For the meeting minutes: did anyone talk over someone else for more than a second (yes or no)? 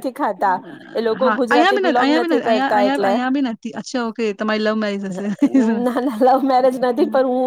yes